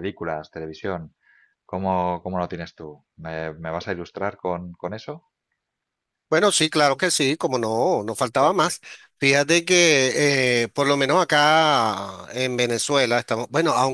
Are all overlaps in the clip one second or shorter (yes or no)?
yes